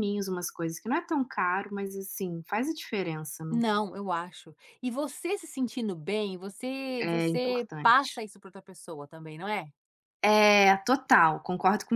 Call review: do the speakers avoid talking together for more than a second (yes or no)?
no